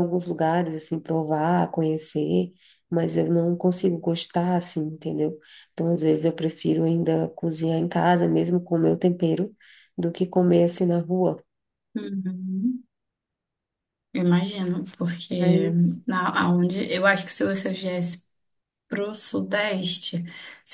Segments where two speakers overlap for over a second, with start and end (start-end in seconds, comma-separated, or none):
none